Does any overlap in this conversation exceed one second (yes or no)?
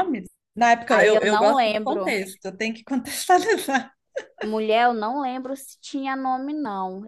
yes